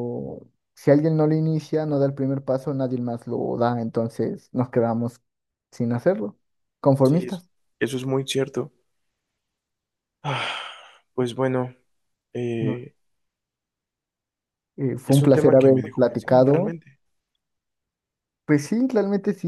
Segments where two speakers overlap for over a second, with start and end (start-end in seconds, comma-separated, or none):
15.1-16.8